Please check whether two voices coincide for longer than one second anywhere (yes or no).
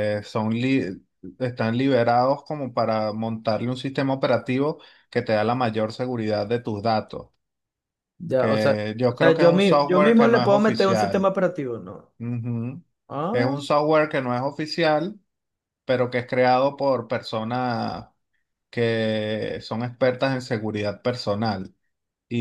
yes